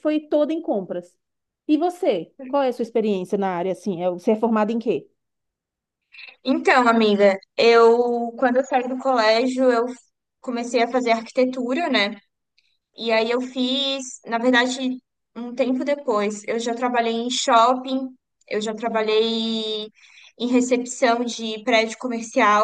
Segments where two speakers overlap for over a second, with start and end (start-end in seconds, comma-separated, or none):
none